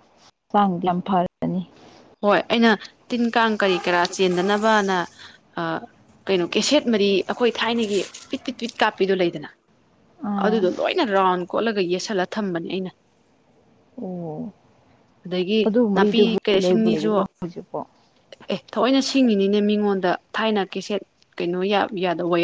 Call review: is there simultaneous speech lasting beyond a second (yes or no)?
yes